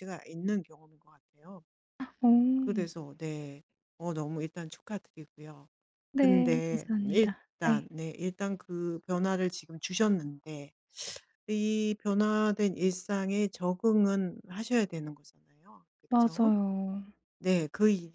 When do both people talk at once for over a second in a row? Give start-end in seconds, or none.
6.1-7.9